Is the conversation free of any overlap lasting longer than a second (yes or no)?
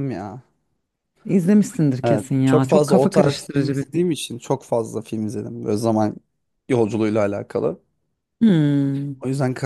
no